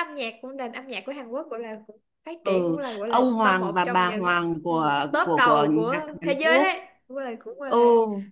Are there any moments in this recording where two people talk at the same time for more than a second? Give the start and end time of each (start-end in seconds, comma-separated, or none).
2.4-6.8